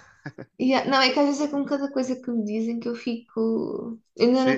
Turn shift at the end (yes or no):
yes